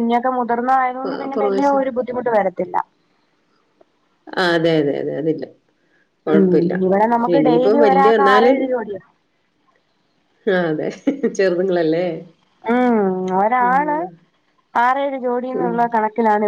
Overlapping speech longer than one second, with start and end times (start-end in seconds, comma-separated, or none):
6.3-8.6